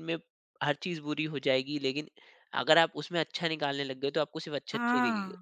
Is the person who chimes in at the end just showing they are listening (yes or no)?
no